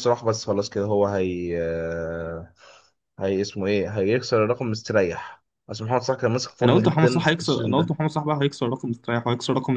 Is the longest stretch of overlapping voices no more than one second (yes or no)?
no